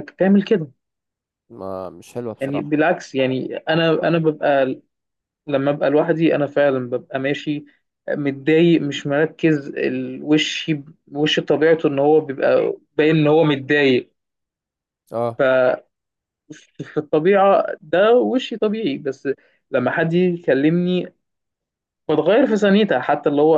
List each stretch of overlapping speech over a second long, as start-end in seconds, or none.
none